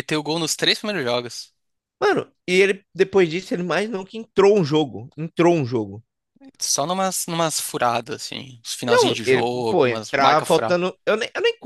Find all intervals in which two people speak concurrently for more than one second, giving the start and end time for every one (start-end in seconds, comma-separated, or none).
8.9-10.8